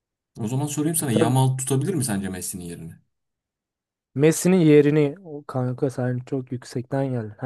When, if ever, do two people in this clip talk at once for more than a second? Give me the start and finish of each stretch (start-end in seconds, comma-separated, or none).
none